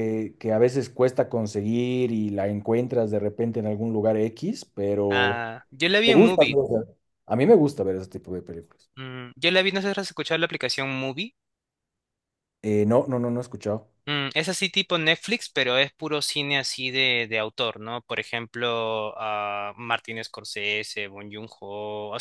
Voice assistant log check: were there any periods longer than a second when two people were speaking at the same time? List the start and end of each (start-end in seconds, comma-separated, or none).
none